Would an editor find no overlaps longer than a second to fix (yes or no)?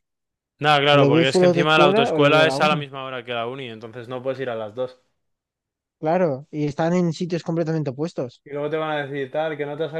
no